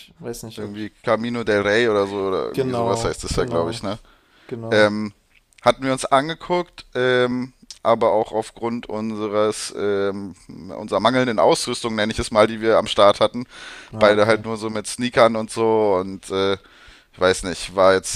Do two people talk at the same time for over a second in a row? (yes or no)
yes